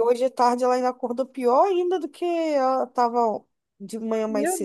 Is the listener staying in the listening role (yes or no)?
no